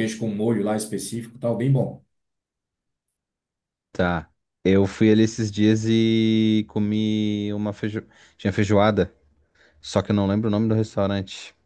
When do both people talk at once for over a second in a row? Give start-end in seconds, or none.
none